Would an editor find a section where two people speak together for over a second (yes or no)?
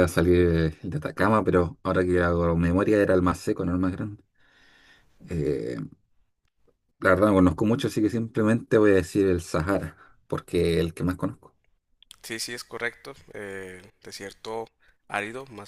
no